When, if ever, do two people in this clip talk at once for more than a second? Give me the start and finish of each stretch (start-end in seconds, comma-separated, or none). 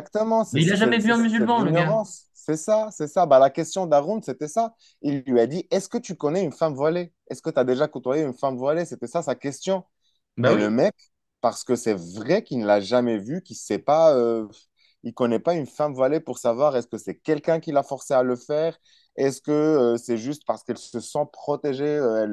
0.5-2.0